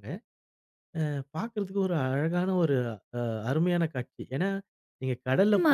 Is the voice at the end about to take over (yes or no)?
yes